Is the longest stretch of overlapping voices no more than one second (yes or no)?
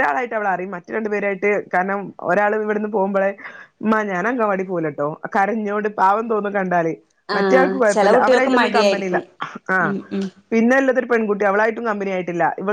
no